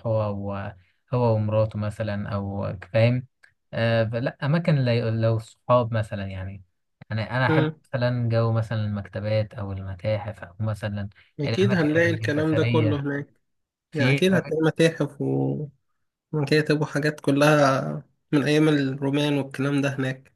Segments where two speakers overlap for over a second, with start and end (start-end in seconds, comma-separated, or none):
11.4-13.0